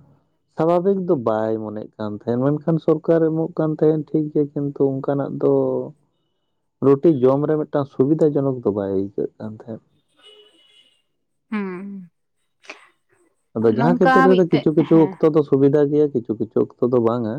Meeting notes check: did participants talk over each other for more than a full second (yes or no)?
yes